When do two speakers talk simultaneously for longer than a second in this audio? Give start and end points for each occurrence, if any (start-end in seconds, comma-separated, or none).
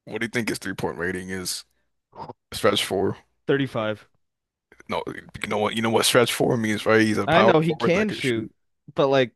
7.3-8.5